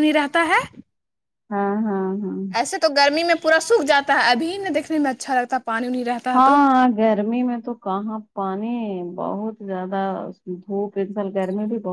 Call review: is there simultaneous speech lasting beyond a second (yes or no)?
no